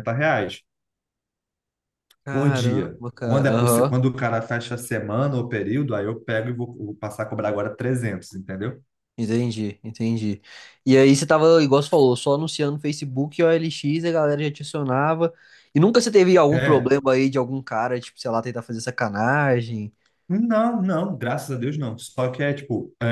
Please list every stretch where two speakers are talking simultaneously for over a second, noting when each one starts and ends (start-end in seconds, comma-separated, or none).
2.3-4.0